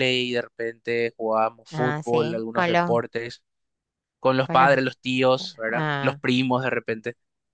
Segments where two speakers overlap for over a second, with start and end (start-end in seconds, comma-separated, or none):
1.7-3.0